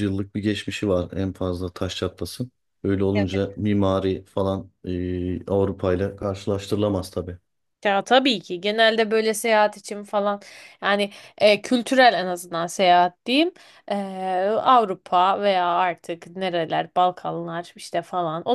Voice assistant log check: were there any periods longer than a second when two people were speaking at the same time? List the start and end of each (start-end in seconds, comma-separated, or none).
none